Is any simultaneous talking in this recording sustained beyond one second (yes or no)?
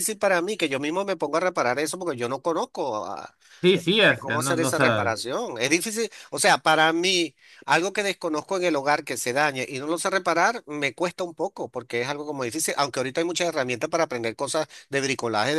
yes